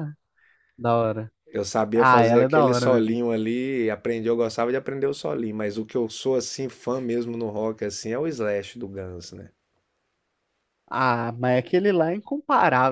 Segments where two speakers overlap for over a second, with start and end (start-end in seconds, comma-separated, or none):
1.9-3.2